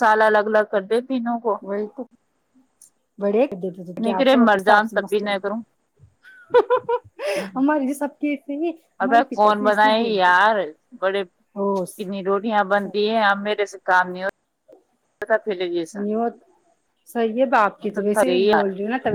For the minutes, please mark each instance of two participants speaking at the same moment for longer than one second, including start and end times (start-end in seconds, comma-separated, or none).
4.0-5.5